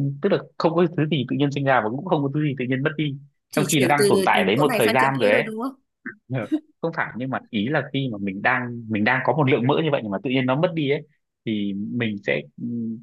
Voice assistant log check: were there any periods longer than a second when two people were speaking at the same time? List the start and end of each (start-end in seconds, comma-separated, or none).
3.5-5.4